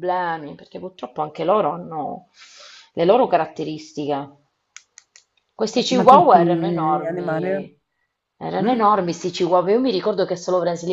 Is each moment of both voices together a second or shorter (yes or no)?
no